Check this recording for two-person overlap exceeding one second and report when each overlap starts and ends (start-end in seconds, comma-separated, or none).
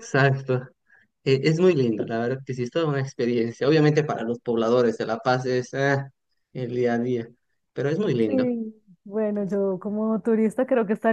none